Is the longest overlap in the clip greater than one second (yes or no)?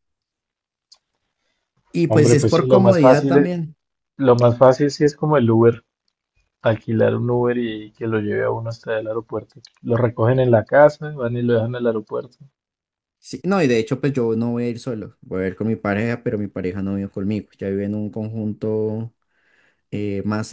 yes